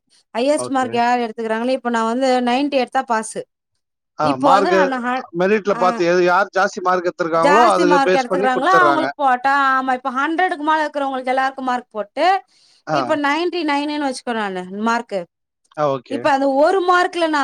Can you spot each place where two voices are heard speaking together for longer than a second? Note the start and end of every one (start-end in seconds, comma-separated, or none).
7.5-9.0